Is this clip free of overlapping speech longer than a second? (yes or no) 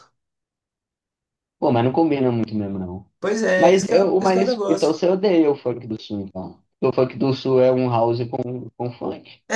no